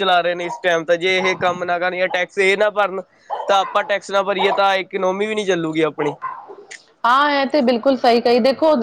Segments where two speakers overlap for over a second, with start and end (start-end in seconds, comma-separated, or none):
none